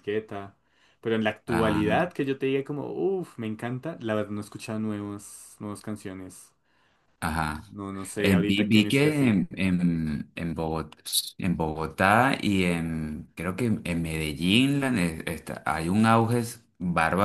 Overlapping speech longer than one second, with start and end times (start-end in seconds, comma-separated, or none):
8.2-9.4